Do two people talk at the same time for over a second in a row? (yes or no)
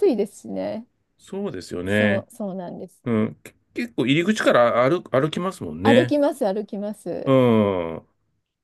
no